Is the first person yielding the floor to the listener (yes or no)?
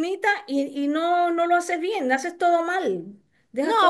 yes